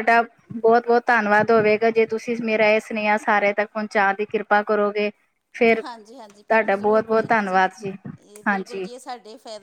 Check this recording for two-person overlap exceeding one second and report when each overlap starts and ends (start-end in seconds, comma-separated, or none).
6.3-7.6